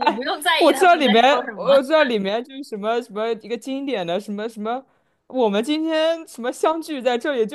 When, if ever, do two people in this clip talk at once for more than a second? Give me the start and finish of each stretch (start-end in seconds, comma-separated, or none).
0.6-1.8